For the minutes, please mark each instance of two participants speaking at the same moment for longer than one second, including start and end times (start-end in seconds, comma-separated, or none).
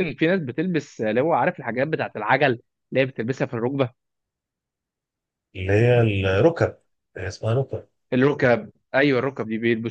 none